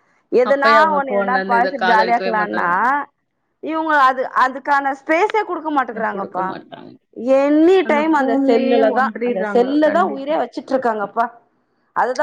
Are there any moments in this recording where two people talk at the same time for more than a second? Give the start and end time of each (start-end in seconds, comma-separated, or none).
0.5-2.7, 8.1-10.3